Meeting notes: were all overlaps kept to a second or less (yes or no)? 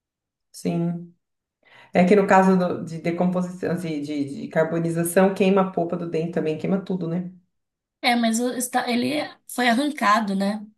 yes